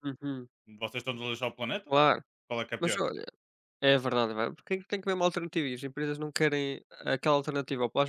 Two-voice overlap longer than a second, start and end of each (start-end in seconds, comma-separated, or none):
none